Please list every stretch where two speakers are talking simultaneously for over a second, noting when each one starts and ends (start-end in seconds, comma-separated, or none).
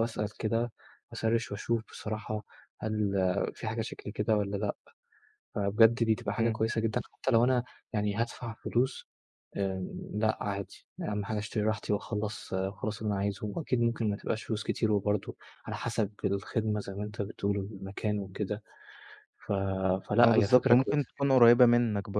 20.2-21.4